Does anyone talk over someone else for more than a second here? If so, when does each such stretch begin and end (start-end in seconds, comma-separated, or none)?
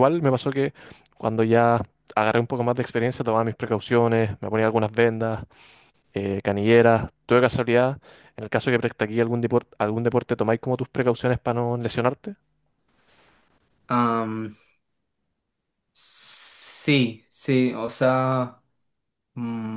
none